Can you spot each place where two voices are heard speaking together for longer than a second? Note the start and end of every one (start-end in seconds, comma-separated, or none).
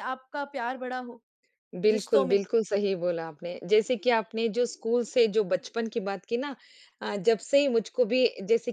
none